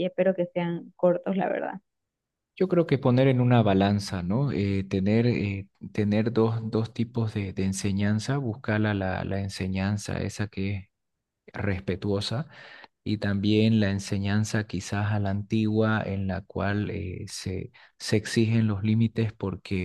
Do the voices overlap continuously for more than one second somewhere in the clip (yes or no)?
no